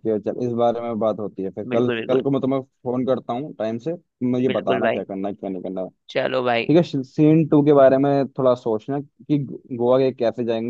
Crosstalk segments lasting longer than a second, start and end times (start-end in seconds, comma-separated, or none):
none